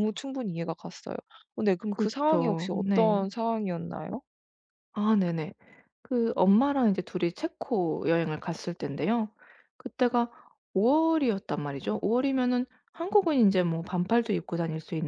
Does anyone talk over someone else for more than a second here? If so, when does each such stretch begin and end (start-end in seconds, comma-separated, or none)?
1.9-3.2